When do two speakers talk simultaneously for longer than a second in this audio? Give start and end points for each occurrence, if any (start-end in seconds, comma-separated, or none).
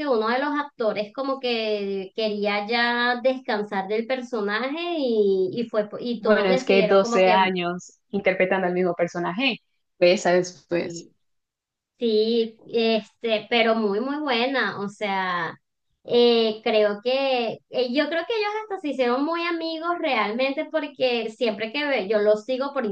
6.2-7.5